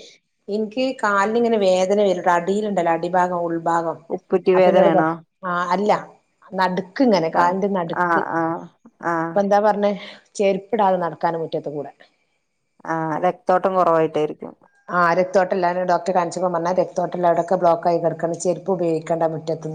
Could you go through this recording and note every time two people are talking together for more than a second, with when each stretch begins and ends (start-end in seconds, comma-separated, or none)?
none